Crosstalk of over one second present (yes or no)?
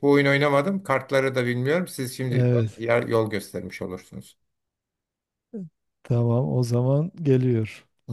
no